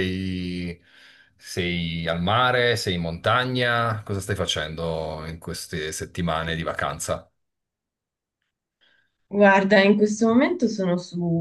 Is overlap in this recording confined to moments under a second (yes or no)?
yes